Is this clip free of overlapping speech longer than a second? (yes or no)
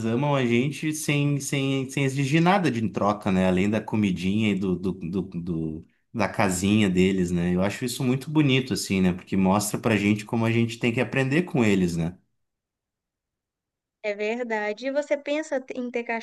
yes